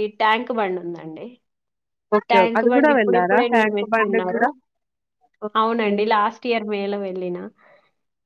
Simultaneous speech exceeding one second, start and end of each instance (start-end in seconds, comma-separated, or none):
2.3-4.4